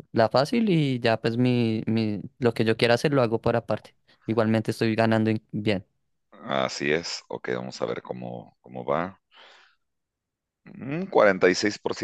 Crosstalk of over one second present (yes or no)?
no